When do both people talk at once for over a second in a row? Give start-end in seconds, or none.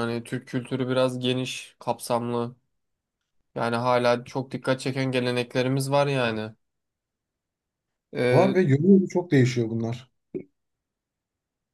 none